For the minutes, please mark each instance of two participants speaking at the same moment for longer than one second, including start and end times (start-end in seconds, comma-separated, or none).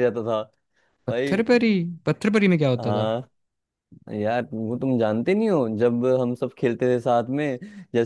none